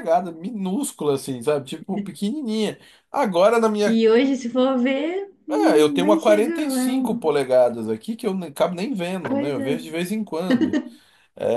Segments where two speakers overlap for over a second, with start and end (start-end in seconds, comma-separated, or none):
5.5-7.3